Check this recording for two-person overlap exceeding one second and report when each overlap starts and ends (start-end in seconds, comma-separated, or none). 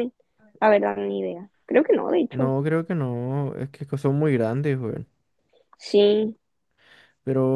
none